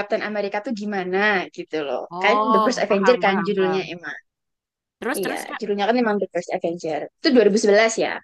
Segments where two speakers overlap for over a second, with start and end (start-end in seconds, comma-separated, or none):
2.1-3.9